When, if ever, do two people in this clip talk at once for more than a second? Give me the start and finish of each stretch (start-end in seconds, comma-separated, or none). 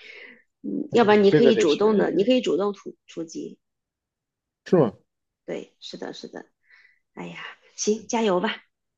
0.9-2.3